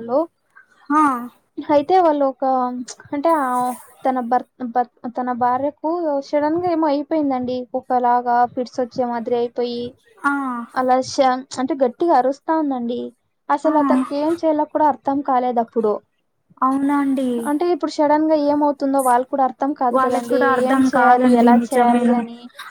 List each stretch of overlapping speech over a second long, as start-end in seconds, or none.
20.0-22.1